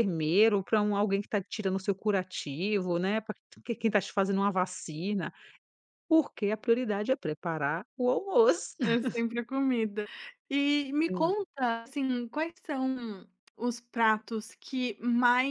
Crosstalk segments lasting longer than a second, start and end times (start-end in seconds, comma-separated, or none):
none